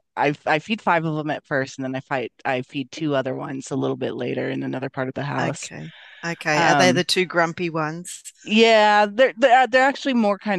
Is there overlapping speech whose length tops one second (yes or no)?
no